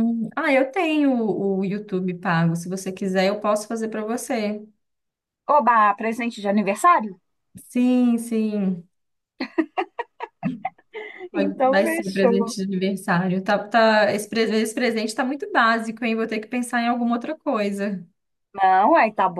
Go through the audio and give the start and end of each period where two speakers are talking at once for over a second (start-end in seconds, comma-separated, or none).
11.3-12.5